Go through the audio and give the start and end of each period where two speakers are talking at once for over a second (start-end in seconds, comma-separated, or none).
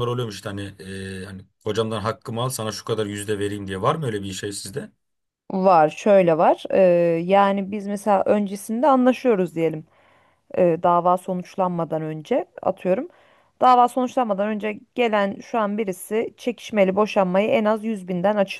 none